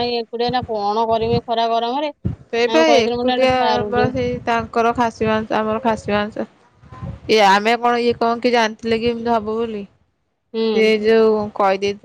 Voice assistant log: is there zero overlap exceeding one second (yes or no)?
no